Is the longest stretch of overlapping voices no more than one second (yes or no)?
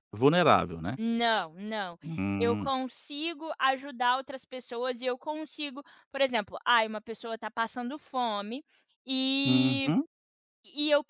yes